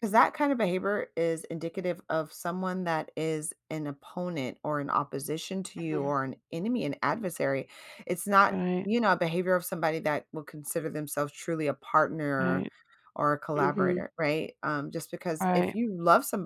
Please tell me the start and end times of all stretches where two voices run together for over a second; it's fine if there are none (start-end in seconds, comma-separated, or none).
none